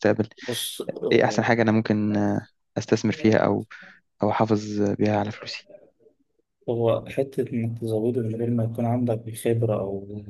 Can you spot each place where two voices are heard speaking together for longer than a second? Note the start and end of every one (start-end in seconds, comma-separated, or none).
none